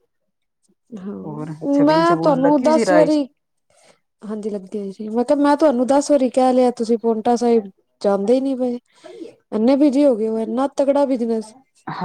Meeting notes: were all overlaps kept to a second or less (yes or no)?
no